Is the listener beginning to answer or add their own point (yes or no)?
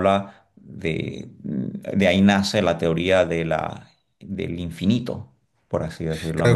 yes